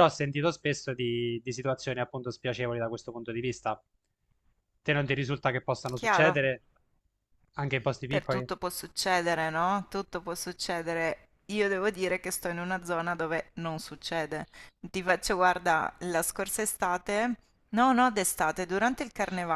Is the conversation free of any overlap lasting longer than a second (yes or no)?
yes